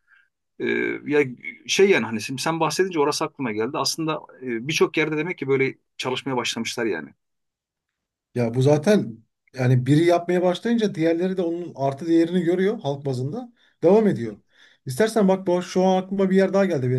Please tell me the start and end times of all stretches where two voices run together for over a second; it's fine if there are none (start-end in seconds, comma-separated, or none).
none